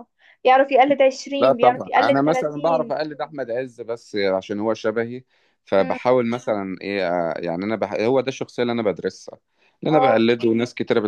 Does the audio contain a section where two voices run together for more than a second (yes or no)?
yes